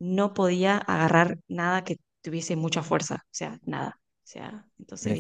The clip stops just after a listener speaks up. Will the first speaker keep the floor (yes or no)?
no